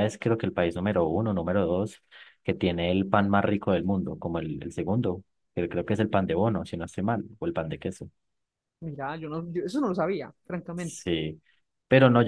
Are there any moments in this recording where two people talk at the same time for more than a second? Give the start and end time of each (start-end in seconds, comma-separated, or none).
none